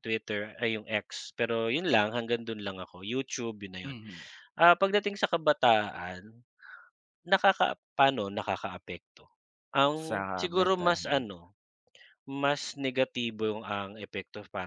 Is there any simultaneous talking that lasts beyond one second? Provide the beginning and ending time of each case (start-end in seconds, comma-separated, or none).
9.9-11.3